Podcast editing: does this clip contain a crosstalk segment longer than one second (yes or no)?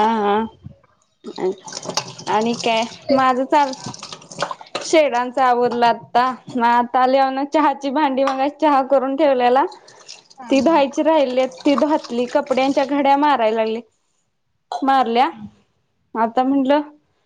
yes